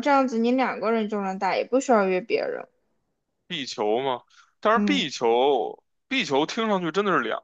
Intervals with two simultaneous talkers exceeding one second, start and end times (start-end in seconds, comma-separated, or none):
none